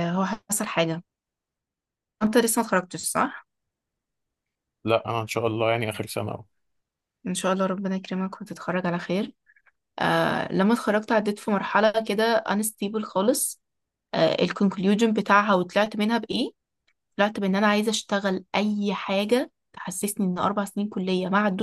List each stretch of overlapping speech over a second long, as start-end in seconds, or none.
none